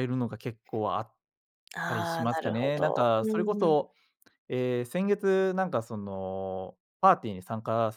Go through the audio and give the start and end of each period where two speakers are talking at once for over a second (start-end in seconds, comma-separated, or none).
2.2-3.8